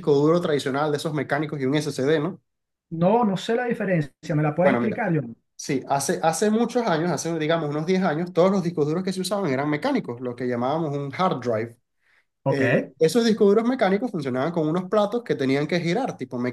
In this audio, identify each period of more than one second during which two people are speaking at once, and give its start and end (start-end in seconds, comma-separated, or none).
none